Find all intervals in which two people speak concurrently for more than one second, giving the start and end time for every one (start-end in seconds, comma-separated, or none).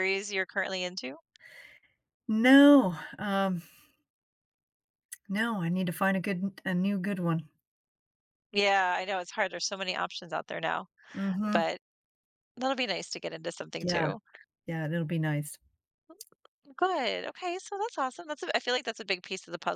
none